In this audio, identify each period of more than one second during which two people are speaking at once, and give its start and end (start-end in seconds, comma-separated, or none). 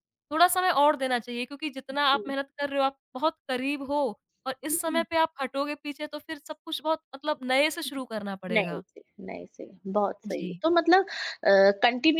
none